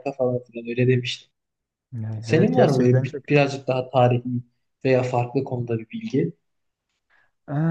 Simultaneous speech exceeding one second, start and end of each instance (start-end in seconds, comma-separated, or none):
2.2-3.5